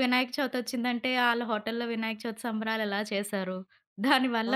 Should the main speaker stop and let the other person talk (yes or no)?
no